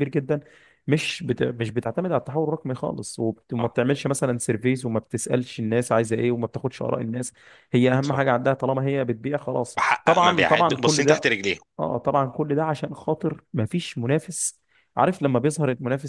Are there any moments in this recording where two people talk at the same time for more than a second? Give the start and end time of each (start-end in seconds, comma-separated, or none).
9.8-11.3